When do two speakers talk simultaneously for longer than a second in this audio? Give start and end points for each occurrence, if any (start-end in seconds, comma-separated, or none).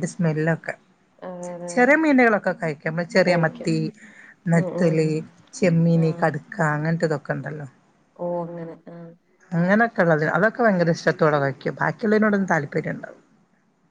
none